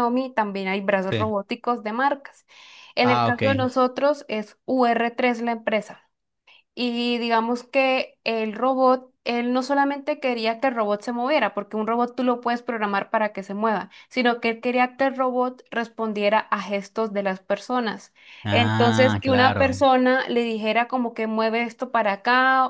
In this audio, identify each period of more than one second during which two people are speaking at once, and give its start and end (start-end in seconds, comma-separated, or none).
18.5-19.9